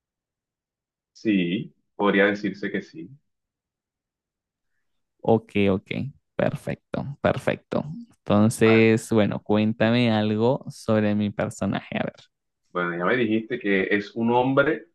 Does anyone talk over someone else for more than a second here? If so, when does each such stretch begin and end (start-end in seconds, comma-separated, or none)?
none